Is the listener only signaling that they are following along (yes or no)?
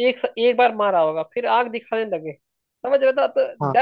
yes